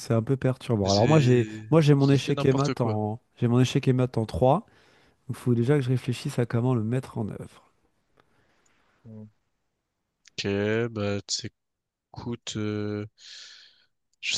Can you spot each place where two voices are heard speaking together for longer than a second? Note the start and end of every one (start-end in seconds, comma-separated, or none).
0.8-3.0